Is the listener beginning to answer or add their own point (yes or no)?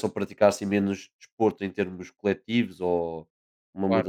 no